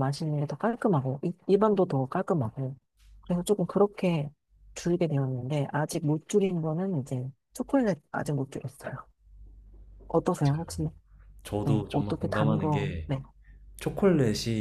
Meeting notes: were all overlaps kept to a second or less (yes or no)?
no